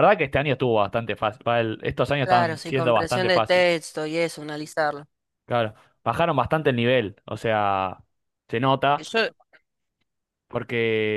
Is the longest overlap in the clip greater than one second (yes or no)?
yes